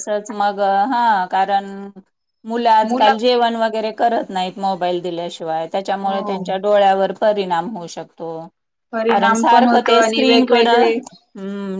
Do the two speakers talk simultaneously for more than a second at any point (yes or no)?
yes